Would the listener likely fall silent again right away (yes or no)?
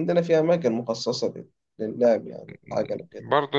no